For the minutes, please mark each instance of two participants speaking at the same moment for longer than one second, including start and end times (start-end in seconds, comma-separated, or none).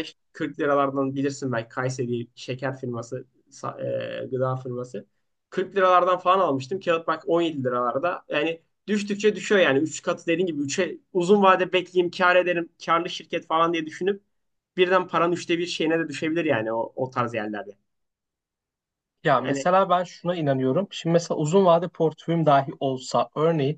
none